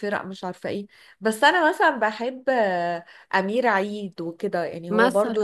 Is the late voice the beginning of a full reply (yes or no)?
no